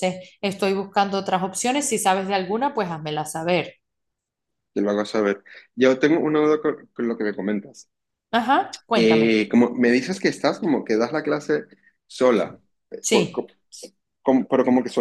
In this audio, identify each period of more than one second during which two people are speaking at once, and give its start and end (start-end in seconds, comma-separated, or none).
none